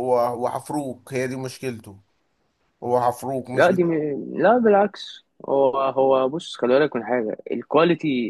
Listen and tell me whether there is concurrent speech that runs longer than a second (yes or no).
no